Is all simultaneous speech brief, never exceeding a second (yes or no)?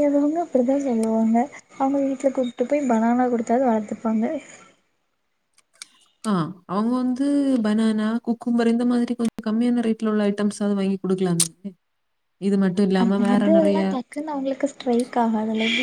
yes